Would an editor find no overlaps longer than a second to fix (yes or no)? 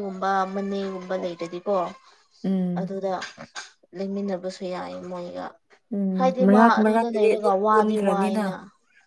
no